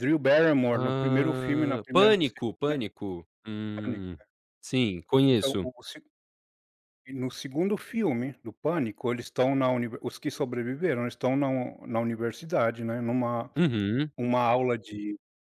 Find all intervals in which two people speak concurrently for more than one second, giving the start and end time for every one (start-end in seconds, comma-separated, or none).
0.7-2.8